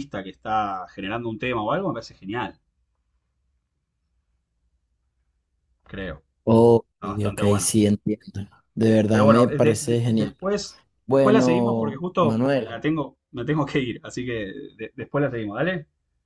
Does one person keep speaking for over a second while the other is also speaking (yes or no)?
yes